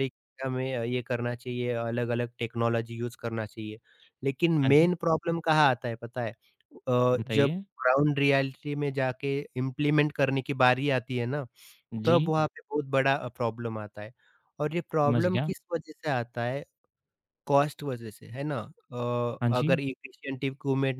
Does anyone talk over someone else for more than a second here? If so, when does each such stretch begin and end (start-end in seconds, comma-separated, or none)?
none